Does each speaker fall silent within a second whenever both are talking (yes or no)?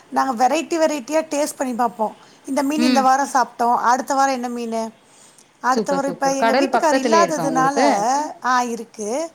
no